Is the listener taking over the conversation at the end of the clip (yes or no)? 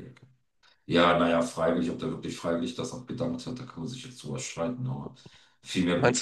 no